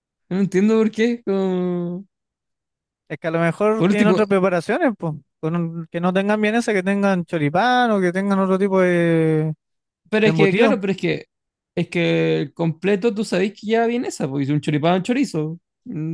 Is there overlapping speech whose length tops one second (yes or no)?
no